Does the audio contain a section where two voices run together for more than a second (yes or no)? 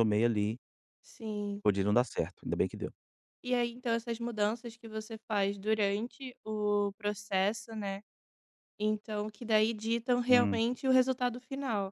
no